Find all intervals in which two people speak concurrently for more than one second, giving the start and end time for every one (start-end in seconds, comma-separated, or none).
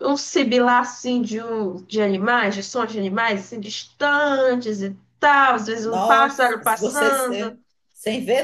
5.8-7.6